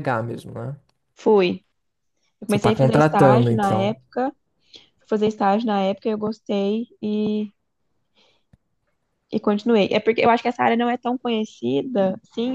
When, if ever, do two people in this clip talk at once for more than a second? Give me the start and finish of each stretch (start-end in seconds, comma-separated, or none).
2.5-4.0